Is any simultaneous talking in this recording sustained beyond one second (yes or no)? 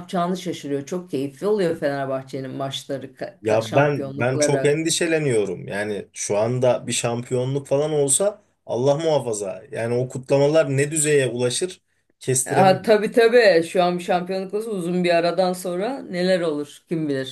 yes